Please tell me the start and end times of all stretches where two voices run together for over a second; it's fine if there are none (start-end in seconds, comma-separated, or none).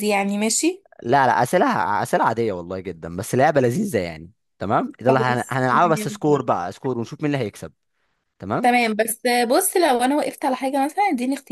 5.1-6.5